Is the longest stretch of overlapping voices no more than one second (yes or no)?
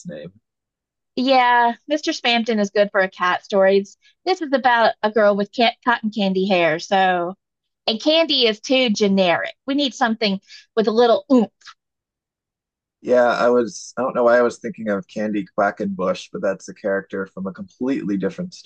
yes